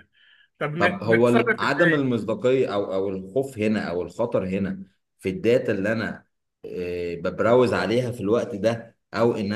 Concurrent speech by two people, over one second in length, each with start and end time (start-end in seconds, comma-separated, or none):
0.8-2.1